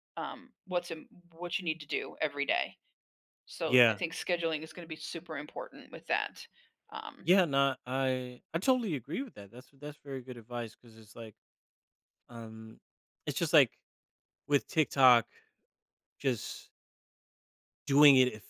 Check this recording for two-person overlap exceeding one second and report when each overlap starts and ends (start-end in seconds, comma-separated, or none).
none